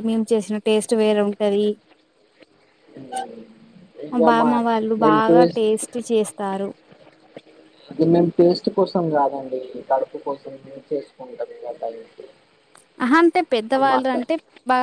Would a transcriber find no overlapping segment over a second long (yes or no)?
yes